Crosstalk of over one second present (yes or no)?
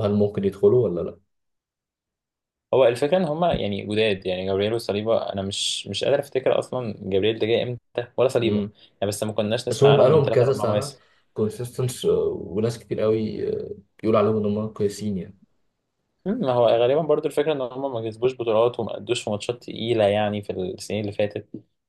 yes